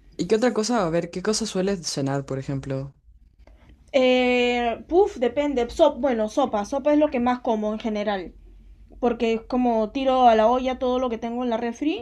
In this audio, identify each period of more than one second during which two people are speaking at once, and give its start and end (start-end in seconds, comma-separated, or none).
none